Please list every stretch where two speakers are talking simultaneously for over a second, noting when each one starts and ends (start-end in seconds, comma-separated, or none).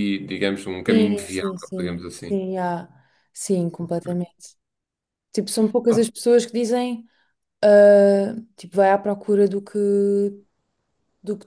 0.9-2.4